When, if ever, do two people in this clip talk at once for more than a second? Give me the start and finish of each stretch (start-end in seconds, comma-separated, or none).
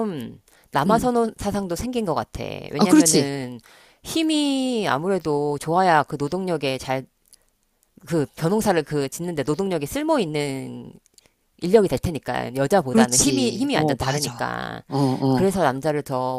12.9-14.4